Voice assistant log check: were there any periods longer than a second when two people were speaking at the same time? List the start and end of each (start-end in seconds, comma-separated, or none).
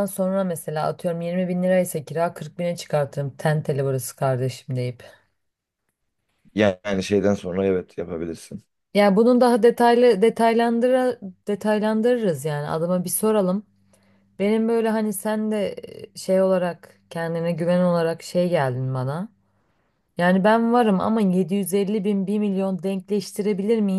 none